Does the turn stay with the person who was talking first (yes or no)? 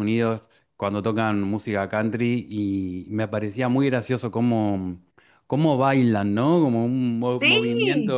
yes